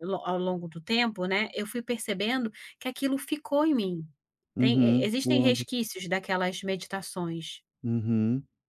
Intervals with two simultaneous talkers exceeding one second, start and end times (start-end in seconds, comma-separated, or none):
4.6-5.8